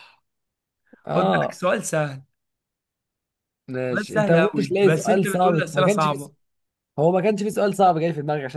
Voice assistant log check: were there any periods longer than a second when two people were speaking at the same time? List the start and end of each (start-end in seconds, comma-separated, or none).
3.9-6.3